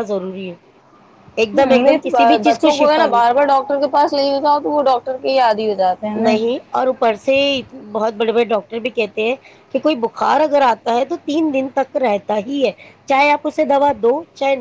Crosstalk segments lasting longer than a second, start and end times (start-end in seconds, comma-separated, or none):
1.5-3.3